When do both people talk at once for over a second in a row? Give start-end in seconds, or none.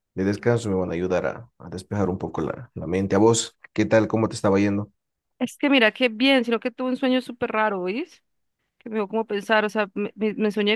none